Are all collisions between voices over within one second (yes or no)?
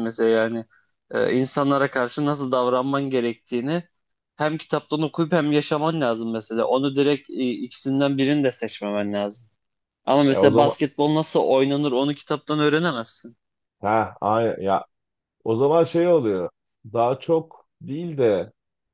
yes